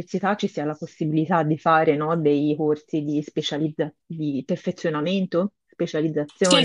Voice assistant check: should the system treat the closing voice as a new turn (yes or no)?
yes